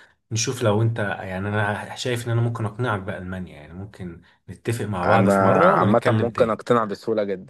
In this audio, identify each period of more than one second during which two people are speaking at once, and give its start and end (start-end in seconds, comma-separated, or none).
5.0-6.6